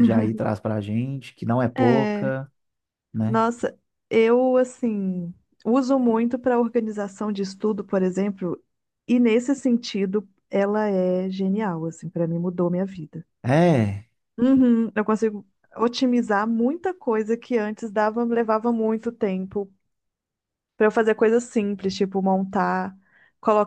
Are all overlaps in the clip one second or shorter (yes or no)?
yes